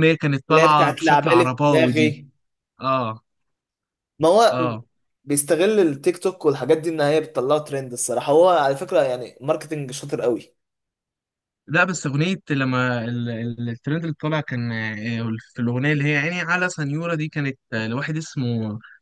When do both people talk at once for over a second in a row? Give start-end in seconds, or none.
0.5-2.2